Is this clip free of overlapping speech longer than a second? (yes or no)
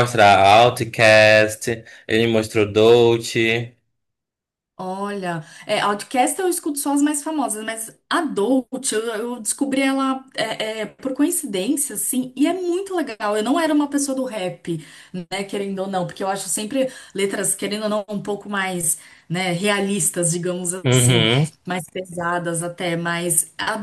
yes